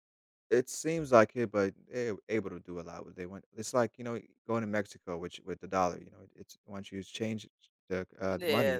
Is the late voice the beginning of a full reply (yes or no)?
yes